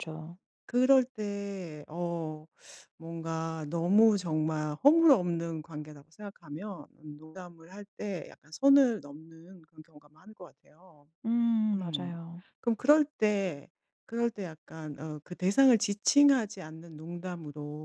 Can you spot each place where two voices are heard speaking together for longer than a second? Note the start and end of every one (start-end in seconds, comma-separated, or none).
none